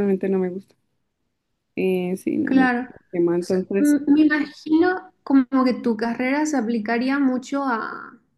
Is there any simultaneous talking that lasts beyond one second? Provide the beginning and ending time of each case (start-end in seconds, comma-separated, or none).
2.4-3.9